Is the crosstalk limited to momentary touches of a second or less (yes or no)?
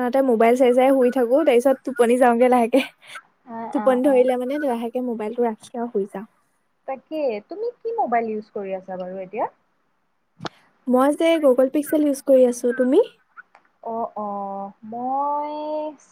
yes